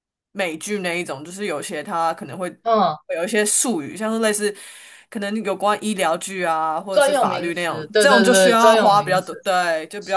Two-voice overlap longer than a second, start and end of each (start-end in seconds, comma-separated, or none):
6.9-9.3